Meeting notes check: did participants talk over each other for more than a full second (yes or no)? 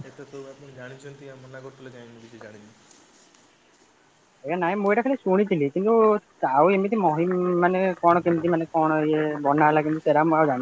no